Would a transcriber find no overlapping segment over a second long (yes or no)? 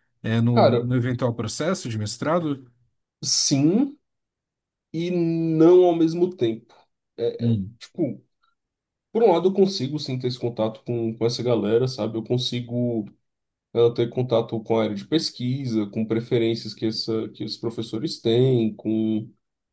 yes